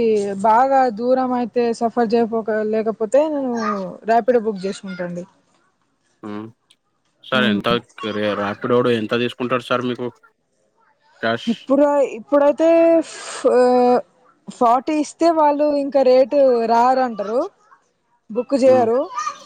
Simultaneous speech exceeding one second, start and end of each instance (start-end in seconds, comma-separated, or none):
none